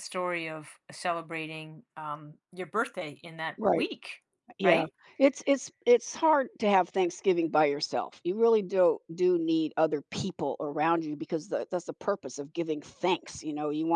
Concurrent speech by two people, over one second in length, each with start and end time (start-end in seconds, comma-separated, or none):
none